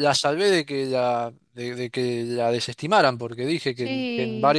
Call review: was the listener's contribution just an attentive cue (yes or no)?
yes